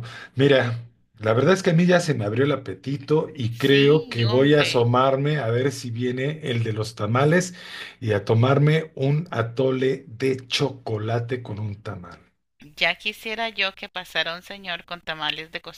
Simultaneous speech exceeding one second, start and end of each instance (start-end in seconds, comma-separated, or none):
3.6-4.9